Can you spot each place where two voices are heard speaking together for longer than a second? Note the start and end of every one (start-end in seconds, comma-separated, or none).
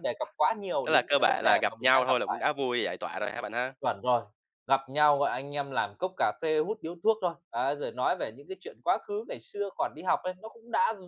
0.8-2.5